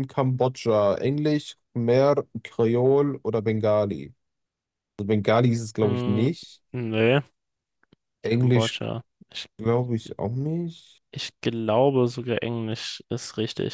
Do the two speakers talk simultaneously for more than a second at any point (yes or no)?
no